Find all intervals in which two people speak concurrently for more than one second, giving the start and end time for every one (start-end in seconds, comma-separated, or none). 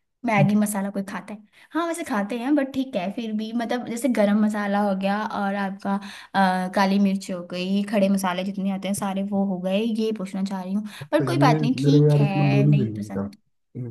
11.0-13.3